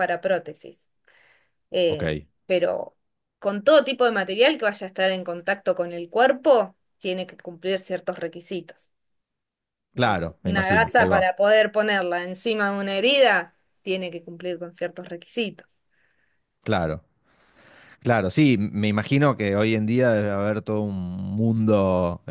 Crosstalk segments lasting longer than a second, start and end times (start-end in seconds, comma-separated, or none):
9.9-11.3